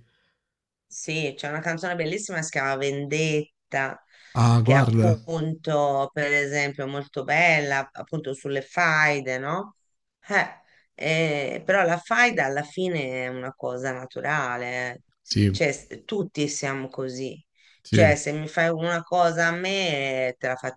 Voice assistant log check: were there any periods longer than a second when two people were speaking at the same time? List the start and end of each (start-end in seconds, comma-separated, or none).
none